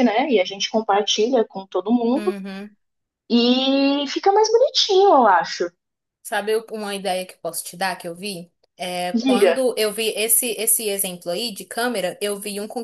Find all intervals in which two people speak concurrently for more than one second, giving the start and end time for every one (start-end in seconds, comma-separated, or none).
none